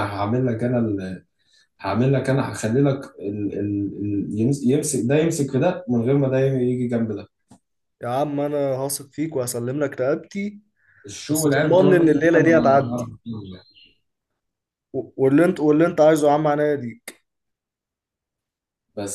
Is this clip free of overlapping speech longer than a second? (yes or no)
no